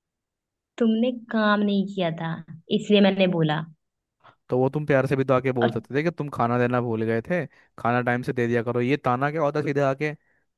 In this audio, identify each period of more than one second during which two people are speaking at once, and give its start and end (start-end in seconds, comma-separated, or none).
none